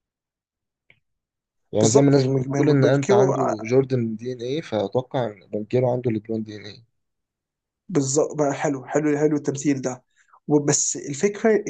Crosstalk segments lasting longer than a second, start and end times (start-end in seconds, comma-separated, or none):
1.8-3.5